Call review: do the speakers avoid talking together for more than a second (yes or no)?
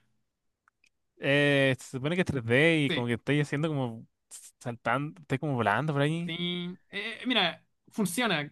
yes